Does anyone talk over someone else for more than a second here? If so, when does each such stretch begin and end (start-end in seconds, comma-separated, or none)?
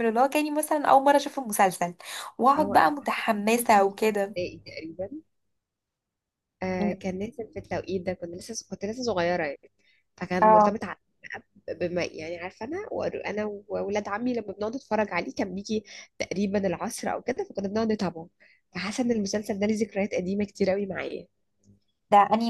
2.6-4.3